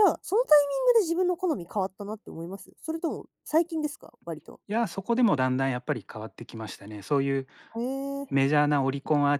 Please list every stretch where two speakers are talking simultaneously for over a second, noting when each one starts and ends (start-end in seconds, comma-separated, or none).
none